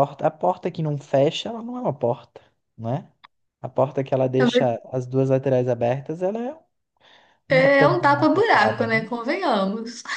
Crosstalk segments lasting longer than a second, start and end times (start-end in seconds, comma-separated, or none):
7.5-9.1